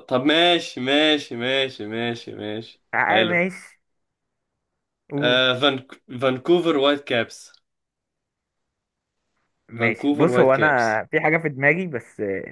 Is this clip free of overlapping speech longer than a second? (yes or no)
no